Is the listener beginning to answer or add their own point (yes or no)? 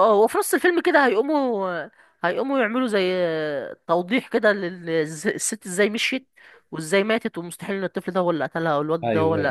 yes